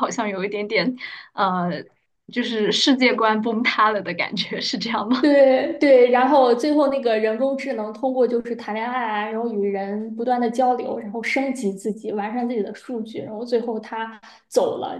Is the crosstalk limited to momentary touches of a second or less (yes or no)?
yes